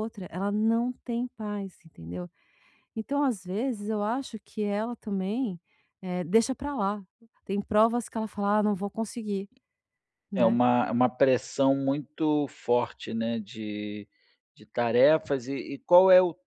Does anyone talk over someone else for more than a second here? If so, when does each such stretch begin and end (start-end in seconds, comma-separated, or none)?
none